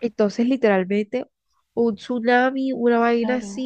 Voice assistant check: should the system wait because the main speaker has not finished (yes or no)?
no